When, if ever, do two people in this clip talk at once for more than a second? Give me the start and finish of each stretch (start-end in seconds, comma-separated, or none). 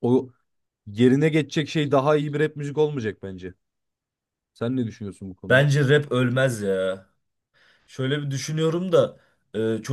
none